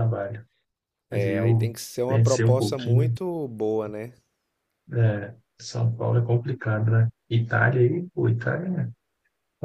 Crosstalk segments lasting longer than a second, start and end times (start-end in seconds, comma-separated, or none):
1.1-3.1